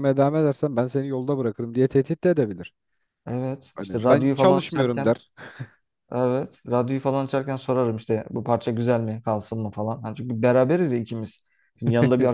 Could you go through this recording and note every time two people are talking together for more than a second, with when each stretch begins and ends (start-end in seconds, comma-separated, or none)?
3.8-5.1